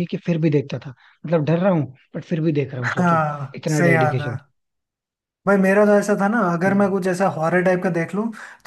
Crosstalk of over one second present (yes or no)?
yes